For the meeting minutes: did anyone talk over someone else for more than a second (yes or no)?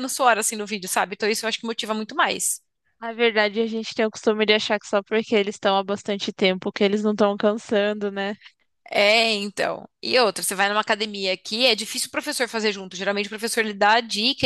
no